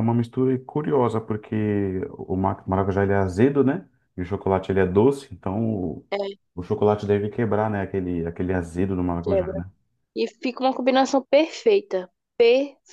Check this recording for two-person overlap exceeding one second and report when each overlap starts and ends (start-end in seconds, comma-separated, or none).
none